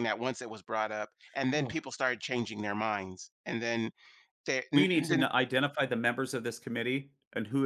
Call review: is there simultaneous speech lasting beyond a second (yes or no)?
no